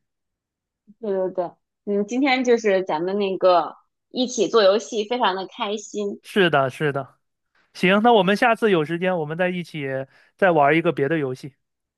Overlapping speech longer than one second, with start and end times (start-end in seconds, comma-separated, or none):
none